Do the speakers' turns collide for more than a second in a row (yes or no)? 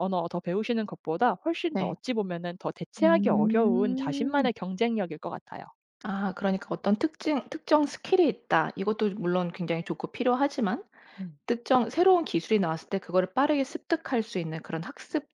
yes